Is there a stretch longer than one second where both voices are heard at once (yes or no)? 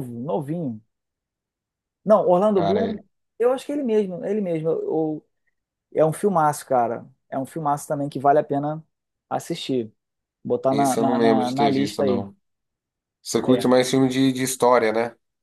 yes